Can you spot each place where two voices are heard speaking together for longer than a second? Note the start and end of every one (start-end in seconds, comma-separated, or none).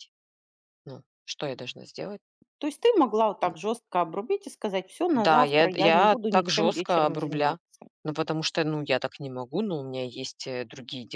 5.1-7.6